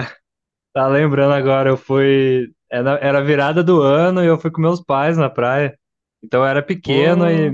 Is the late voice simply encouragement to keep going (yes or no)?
yes